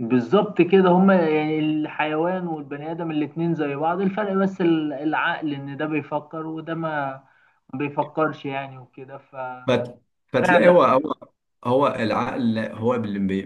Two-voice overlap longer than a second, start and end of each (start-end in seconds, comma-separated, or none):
none